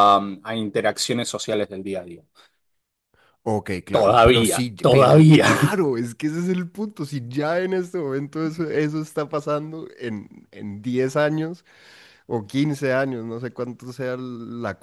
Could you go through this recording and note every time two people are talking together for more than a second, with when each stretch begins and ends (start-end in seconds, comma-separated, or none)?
3.9-5.5